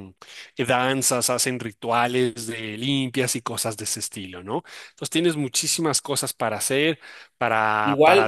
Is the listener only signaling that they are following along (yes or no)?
no